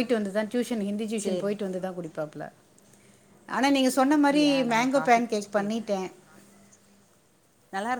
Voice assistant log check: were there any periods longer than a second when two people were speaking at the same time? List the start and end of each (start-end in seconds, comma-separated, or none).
4.1-5.9